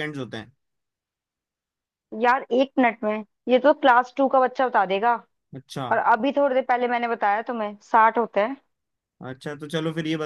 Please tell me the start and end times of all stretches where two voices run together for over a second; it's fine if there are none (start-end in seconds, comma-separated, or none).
none